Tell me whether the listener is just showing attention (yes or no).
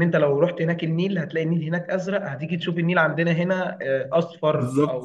yes